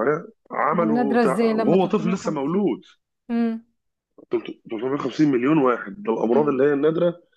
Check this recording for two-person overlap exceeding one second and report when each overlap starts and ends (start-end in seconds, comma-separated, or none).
0.7-2.2